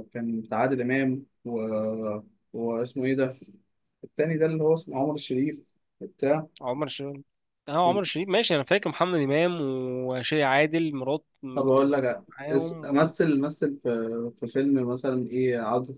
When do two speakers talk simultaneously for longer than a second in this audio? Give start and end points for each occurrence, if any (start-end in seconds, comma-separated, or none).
11.5-13.1